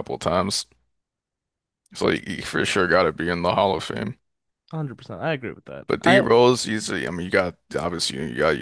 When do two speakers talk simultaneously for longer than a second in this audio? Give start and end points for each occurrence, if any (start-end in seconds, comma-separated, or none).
none